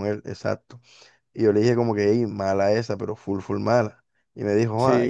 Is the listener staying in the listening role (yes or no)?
yes